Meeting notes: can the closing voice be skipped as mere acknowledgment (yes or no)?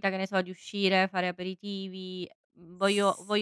yes